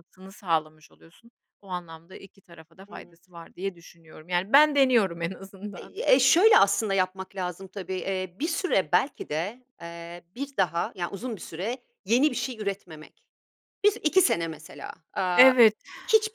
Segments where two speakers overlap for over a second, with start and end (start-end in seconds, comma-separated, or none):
none